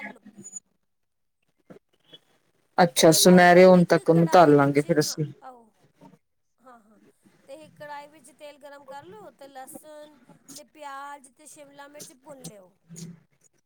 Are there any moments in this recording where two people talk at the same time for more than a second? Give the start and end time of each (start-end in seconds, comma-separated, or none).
3.0-5.1